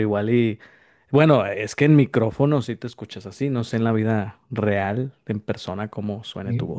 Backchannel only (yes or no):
no